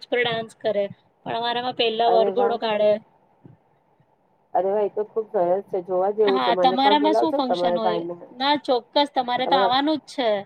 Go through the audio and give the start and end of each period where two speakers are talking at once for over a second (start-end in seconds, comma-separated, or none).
6.3-8.0